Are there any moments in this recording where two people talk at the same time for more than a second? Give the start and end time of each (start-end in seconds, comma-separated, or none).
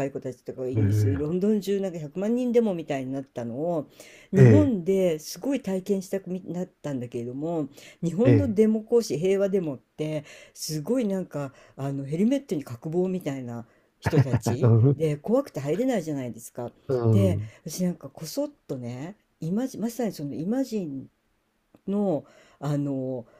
none